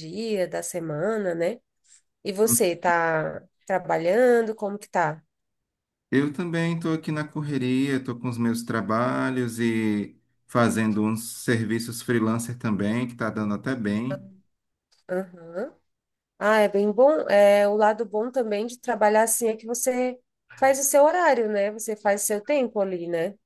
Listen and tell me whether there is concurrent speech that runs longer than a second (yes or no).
no